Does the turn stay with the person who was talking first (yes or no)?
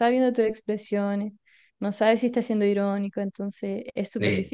no